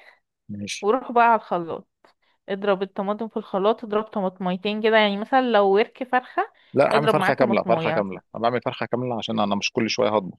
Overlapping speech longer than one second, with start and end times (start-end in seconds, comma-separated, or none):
6.9-8.2